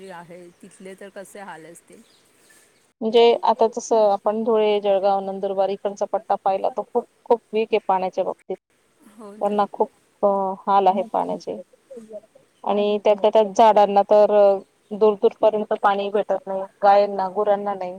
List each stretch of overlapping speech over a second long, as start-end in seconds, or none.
none